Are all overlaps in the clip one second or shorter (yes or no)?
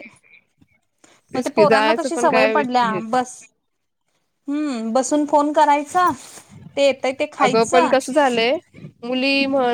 no